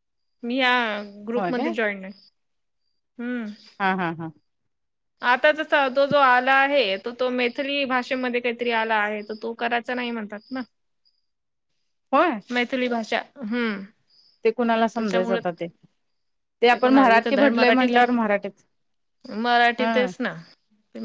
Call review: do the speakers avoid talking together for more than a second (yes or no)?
no